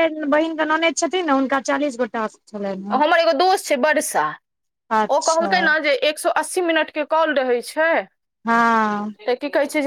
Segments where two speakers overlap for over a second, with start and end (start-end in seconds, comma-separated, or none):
none